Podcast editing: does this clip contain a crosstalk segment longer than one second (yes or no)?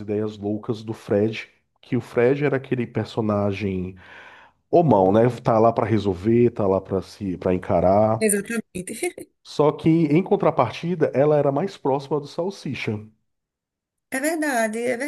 no